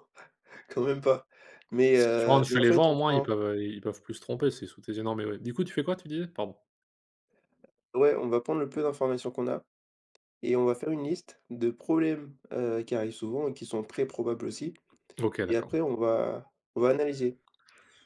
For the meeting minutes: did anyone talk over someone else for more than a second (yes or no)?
yes